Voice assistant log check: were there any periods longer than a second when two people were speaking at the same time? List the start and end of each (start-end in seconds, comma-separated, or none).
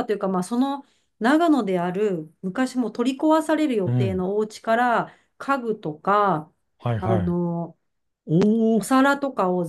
none